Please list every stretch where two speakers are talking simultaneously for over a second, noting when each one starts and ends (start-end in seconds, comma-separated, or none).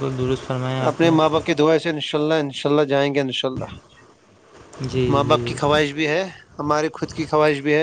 none